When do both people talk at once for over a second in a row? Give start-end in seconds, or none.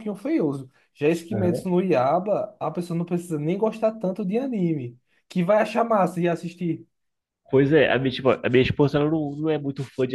none